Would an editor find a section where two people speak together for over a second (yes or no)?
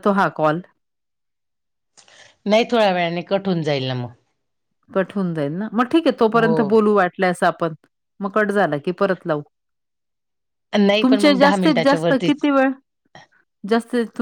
yes